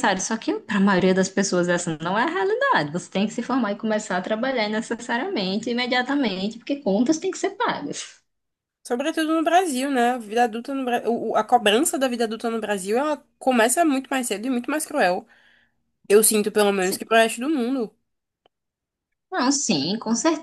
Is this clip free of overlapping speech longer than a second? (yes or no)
yes